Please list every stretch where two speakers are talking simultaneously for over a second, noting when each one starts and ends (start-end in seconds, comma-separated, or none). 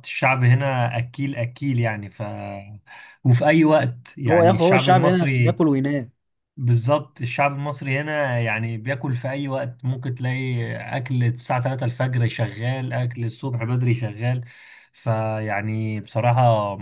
4.3-5.6